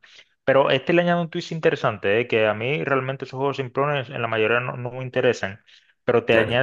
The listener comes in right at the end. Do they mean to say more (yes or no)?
no